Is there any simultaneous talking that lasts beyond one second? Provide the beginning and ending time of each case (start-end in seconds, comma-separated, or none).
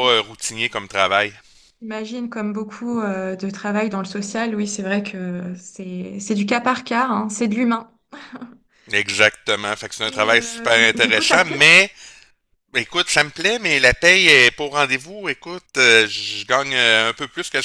10.0-11.7